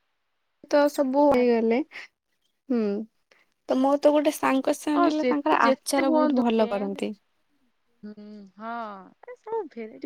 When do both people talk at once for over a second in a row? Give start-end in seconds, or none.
5.0-7.0